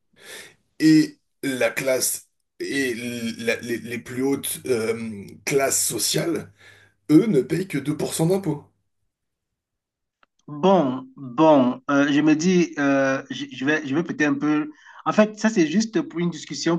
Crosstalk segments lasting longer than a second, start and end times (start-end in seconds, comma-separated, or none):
none